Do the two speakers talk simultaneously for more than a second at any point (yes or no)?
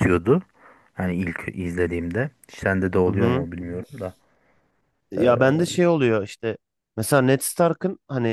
no